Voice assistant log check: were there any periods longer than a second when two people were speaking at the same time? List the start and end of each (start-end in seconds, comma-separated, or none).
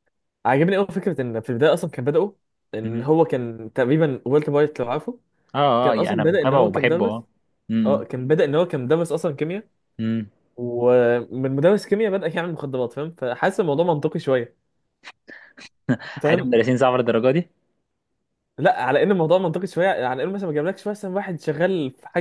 5.8-7.2